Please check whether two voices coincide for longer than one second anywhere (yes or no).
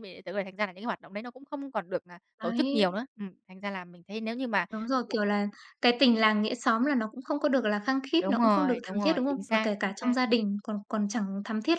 yes